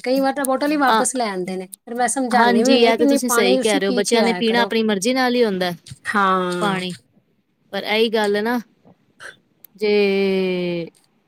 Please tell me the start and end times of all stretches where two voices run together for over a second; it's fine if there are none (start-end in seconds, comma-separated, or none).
none